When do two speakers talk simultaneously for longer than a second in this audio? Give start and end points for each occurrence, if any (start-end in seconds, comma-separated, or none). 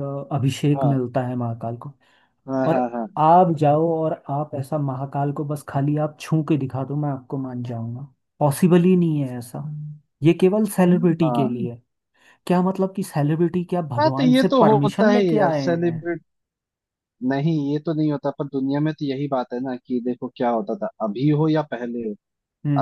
14.0-16.0